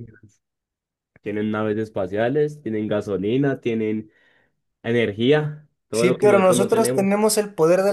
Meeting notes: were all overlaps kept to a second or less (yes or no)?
no